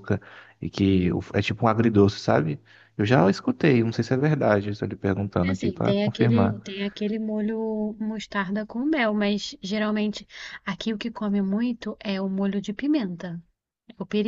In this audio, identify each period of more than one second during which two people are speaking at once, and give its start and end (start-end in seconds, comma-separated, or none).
5.4-6.6